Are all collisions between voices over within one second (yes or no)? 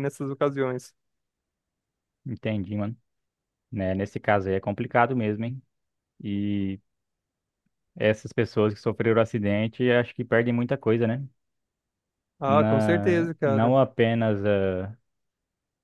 no